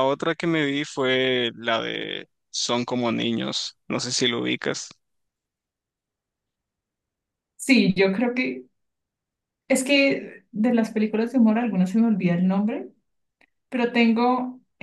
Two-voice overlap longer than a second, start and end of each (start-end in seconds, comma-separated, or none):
none